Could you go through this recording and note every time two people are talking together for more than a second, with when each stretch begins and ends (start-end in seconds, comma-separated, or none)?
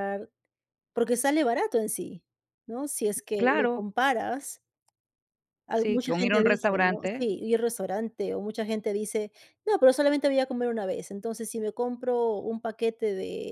5.7-7.3